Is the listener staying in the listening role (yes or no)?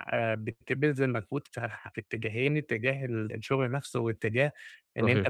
yes